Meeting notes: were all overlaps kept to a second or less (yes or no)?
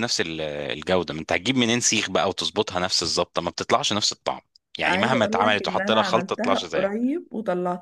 no